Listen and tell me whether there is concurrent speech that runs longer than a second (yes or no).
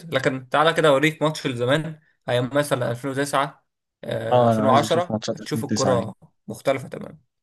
yes